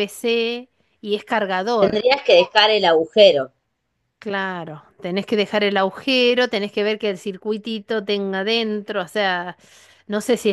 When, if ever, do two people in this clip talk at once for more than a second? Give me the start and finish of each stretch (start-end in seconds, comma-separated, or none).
none